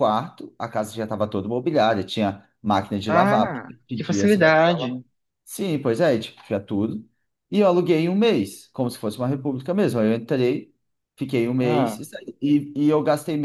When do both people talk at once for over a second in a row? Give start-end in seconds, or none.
3.2-4.9